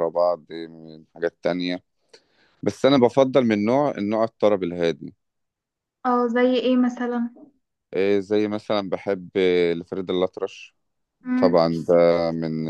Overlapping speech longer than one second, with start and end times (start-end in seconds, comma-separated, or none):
none